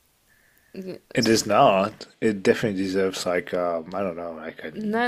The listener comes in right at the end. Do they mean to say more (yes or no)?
yes